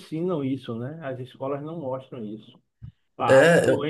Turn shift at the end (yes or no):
no